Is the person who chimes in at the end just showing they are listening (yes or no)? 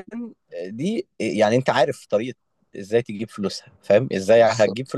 yes